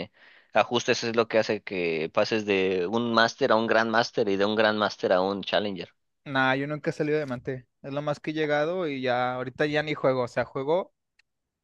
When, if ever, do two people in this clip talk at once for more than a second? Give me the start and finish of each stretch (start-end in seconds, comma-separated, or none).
none